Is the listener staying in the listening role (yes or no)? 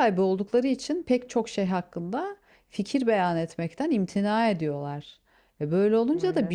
yes